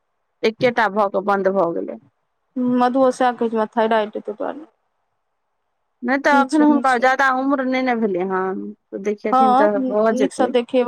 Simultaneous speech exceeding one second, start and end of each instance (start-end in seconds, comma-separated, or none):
none